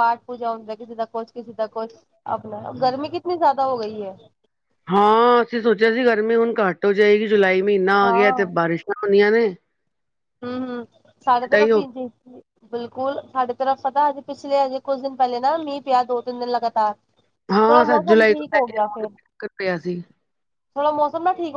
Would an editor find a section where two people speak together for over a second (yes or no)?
yes